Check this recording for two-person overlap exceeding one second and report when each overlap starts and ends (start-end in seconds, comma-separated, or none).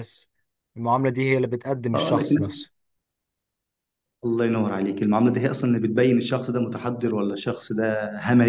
none